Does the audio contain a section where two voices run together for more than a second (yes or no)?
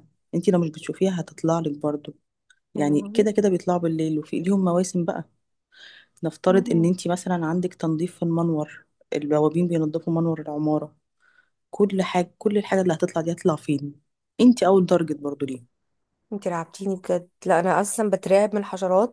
no